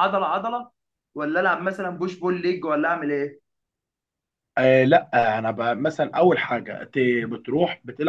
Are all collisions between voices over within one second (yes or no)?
yes